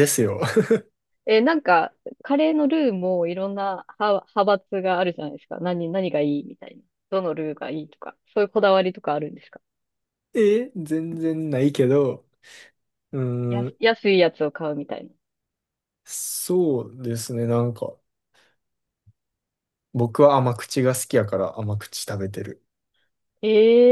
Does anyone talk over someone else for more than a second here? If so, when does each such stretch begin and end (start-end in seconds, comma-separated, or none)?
none